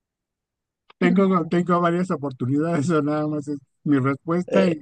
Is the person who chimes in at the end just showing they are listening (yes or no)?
no